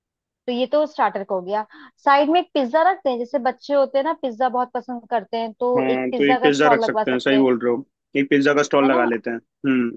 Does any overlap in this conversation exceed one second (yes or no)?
yes